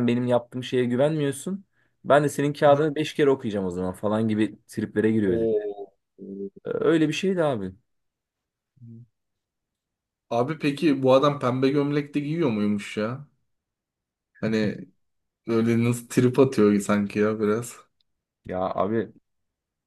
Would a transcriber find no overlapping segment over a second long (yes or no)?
yes